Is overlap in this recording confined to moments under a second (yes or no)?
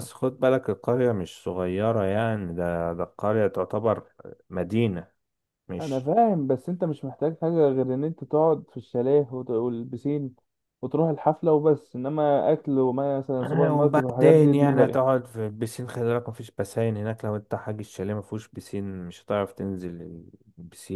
no